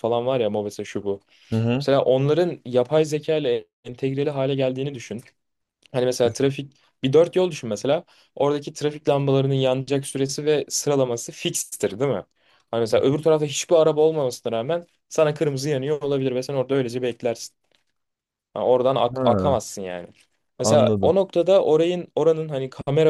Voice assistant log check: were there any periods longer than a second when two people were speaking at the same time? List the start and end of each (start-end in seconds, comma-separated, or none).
none